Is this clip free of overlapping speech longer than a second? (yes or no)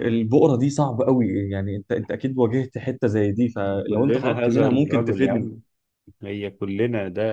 no